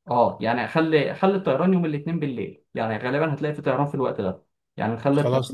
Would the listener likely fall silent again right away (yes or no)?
yes